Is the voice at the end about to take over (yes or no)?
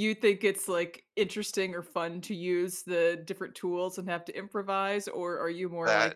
no